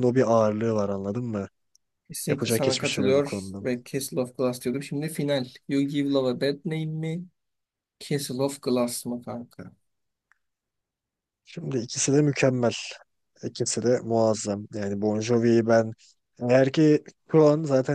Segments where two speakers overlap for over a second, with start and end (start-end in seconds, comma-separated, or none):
2.3-3.7